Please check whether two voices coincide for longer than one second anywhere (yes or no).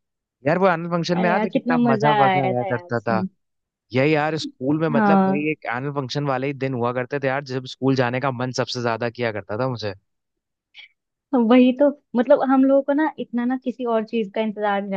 yes